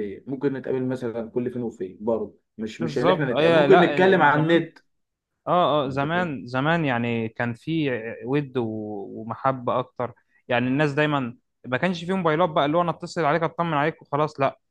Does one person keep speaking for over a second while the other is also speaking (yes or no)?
yes